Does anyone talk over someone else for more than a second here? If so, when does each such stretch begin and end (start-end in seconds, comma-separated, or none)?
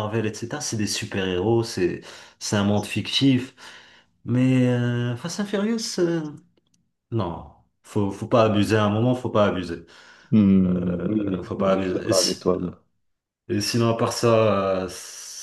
10.7-12.1